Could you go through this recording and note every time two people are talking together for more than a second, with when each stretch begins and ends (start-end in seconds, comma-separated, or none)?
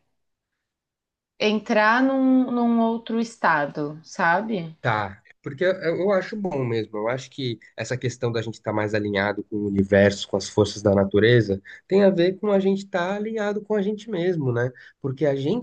none